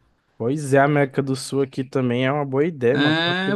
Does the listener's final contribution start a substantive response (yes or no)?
yes